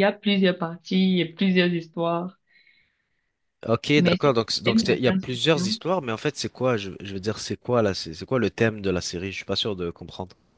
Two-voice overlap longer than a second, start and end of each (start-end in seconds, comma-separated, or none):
4.0-5.8